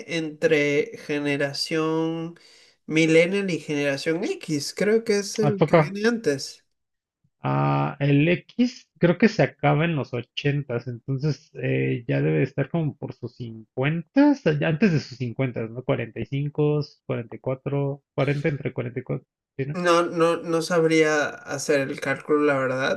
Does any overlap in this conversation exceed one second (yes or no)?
no